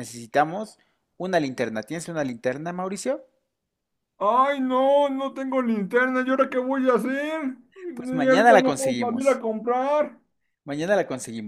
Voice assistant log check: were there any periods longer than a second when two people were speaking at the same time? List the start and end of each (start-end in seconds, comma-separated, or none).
8.0-9.4